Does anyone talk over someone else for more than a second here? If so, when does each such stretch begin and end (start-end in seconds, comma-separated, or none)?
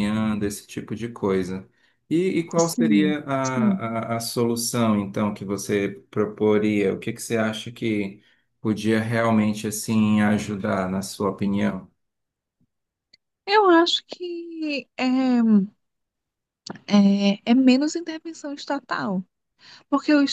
2.6-3.8